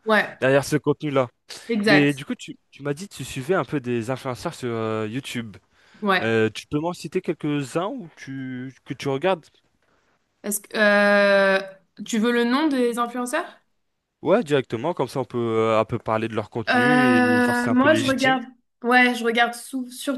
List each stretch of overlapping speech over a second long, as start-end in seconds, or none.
16.7-18.4